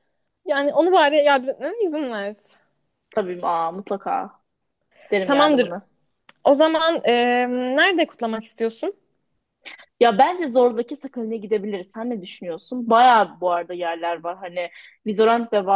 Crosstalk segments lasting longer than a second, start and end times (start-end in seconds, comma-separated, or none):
none